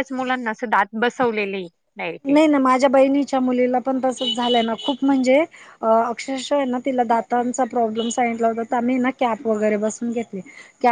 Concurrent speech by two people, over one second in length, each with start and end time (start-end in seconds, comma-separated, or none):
none